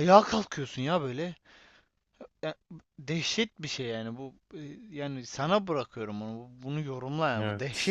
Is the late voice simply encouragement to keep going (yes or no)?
no